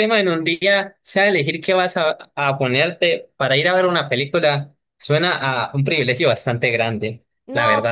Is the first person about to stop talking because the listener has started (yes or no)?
yes